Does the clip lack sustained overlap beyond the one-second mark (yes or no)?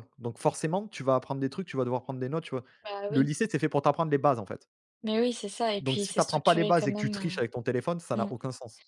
no